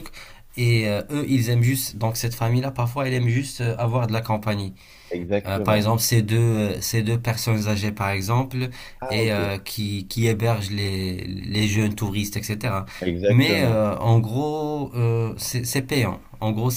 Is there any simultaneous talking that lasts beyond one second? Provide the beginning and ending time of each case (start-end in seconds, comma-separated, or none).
none